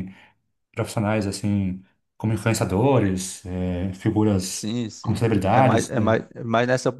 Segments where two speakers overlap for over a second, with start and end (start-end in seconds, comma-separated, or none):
4.5-6.2